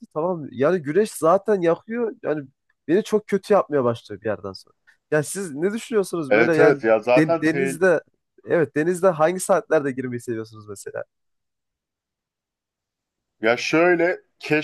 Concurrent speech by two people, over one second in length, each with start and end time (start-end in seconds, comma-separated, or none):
6.3-7.8